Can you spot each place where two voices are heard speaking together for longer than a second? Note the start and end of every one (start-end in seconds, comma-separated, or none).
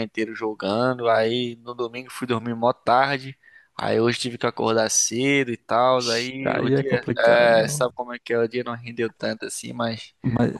6.5-7.9